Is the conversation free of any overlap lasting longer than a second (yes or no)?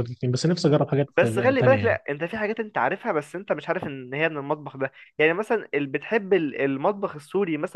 yes